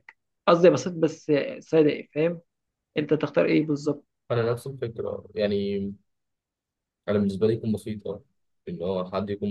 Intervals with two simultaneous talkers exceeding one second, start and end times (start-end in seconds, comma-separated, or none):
none